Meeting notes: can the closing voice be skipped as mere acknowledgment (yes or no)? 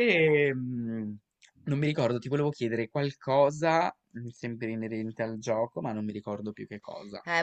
no